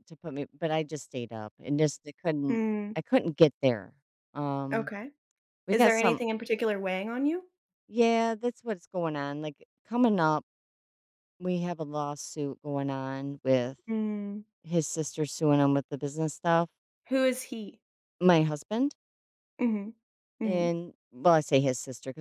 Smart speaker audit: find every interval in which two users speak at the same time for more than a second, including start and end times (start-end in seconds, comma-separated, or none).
none